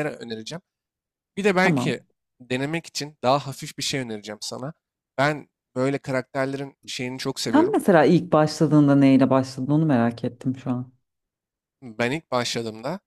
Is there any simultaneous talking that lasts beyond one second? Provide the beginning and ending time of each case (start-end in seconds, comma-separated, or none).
none